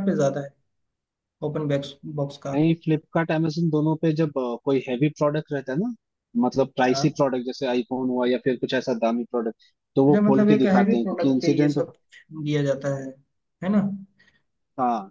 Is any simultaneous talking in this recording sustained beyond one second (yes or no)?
yes